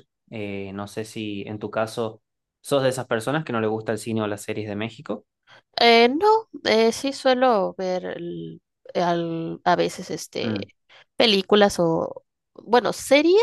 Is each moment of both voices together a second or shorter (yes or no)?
yes